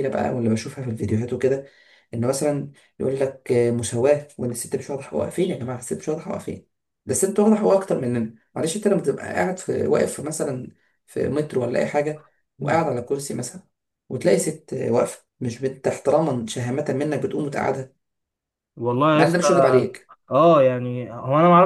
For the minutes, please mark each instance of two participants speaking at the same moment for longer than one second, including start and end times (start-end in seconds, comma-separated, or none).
none